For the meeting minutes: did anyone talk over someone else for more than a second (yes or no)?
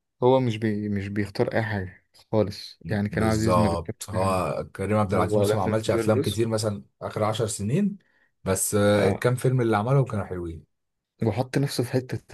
yes